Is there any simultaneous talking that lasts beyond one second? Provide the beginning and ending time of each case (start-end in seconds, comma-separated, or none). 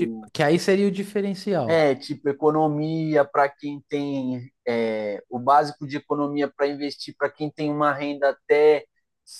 none